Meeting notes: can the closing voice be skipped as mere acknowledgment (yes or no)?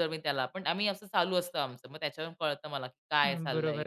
no